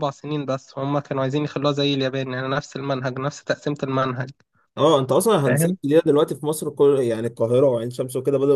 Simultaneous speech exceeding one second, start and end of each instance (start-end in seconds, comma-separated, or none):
none